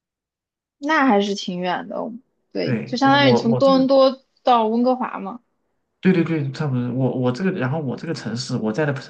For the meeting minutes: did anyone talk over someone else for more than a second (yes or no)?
yes